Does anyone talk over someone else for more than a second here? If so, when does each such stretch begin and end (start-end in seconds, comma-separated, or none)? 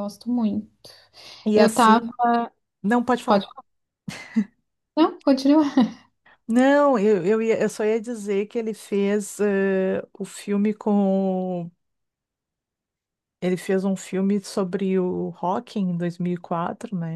none